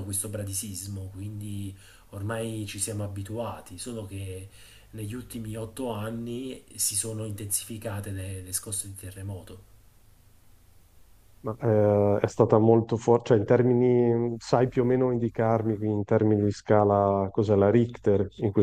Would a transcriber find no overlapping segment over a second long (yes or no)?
yes